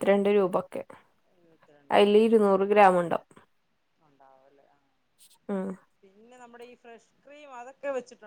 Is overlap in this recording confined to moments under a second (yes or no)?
yes